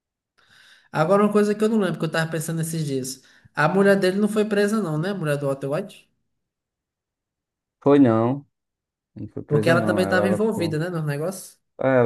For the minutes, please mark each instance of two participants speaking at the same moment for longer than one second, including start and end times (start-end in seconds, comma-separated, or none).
9.5-10.8